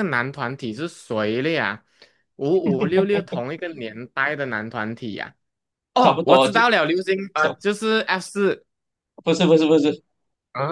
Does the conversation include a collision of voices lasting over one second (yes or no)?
no